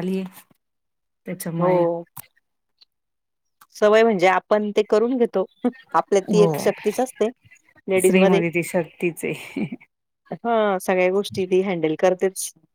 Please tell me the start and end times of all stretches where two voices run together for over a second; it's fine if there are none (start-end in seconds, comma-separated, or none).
none